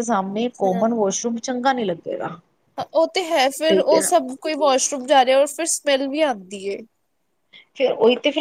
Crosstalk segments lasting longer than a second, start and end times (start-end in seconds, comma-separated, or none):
none